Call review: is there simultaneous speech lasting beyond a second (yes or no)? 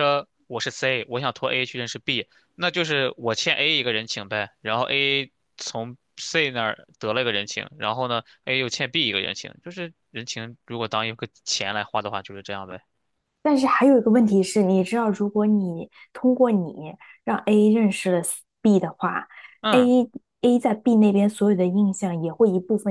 no